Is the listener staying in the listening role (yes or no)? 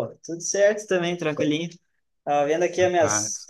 yes